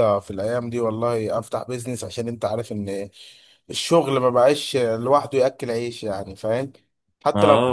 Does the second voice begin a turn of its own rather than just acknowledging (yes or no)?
yes